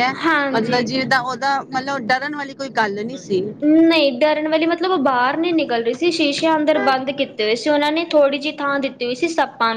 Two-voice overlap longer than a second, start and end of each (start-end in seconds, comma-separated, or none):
none